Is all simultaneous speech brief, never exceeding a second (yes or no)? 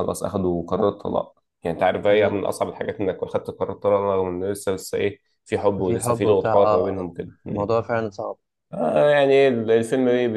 no